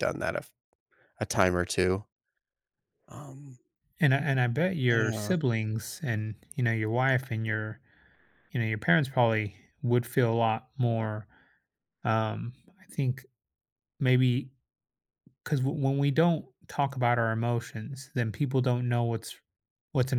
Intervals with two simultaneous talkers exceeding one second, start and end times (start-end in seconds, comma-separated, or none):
none